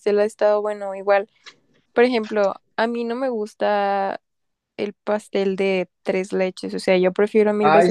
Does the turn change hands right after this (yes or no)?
yes